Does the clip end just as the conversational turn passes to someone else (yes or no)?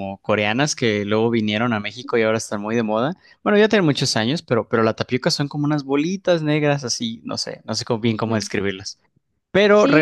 yes